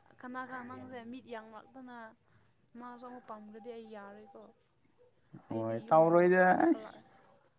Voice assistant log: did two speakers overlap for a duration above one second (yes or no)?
yes